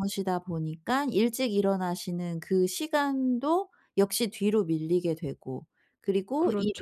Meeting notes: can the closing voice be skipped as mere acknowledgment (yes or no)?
yes